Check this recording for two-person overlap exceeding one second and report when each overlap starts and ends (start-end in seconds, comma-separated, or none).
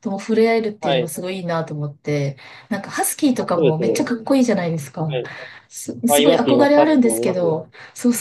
6.1-7.6